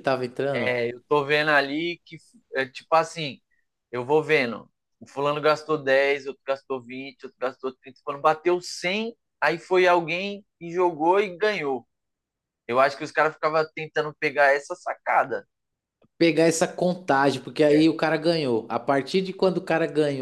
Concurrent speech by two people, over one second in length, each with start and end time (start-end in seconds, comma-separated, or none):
none